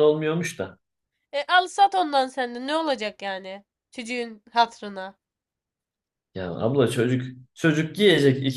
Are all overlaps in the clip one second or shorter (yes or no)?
yes